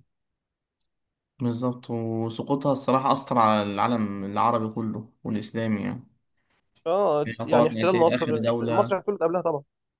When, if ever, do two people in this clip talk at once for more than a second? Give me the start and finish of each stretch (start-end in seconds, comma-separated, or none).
7.3-9.0